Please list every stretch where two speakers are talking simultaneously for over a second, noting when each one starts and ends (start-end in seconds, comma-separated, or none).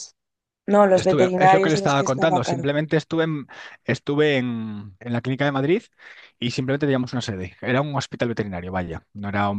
0.9-2.7